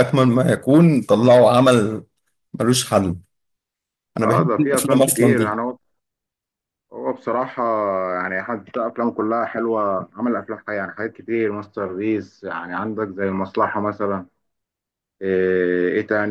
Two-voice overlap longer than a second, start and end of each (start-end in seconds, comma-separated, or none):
4.2-5.6